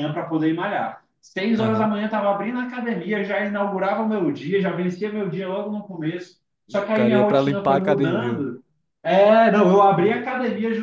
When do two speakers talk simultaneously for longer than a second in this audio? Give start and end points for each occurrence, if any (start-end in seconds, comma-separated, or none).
6.7-8.5